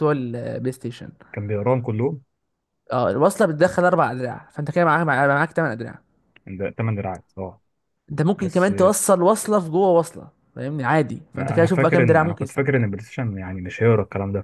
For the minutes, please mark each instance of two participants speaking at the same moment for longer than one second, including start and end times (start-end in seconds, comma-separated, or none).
11.3-13.0